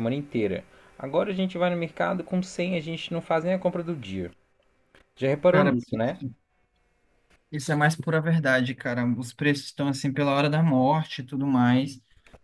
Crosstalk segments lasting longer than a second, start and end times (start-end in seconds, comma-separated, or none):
none